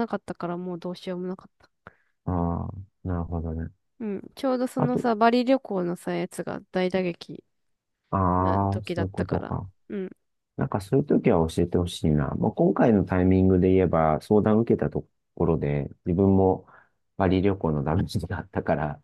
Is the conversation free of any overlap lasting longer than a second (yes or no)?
no